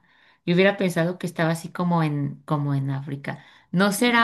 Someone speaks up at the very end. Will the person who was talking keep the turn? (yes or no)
yes